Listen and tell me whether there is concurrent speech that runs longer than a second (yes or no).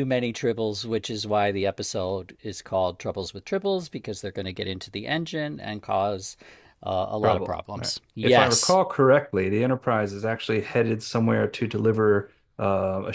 yes